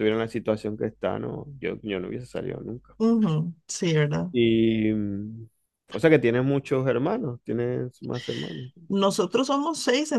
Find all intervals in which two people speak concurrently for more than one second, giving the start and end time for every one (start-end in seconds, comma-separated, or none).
none